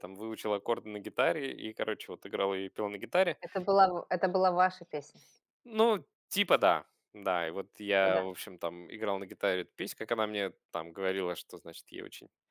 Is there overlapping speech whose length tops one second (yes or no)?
no